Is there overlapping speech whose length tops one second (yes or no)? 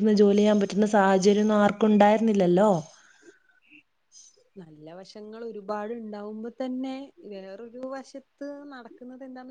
no